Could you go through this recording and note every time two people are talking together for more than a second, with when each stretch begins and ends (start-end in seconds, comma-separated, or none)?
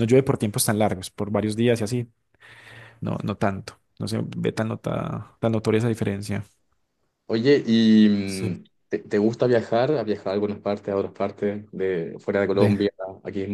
none